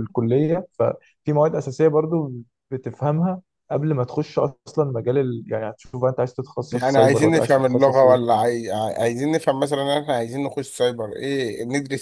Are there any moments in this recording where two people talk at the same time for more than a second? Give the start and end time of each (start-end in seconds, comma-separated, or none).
6.7-8.4